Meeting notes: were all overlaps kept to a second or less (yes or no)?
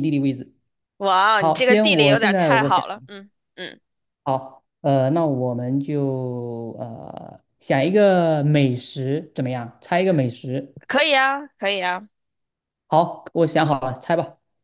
no